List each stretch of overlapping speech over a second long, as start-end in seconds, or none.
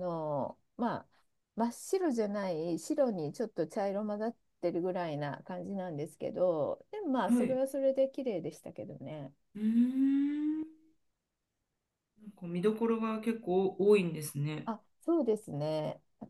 none